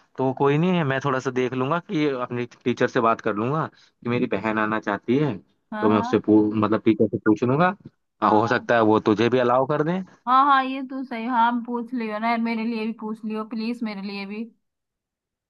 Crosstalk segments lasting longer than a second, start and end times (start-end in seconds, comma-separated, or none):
none